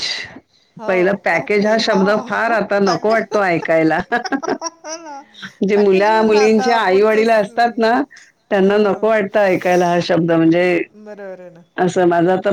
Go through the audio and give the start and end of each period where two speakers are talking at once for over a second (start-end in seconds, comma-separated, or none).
5.7-7.5